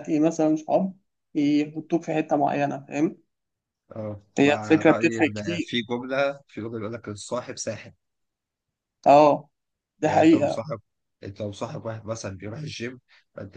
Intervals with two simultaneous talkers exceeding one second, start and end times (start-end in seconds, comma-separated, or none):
4.4-5.7